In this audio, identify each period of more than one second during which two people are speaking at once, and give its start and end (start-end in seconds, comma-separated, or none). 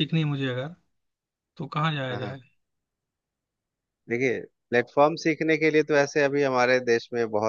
none